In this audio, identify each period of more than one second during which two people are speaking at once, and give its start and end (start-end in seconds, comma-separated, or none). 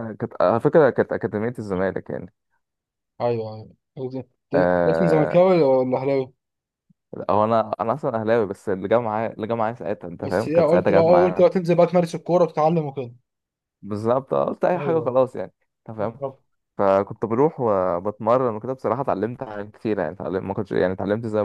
10.2-11.6